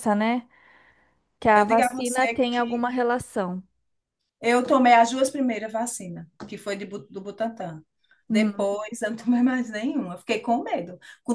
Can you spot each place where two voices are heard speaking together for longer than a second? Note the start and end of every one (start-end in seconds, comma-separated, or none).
1.5-2.9